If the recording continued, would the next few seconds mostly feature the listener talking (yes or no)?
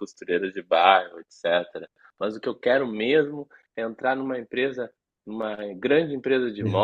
no